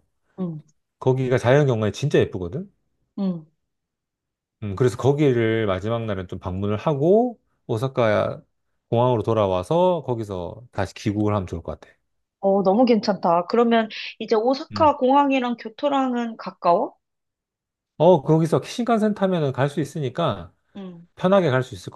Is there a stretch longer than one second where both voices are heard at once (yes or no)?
no